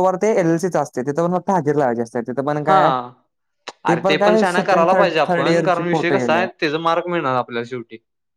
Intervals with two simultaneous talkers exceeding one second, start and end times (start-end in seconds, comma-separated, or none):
4.2-6.4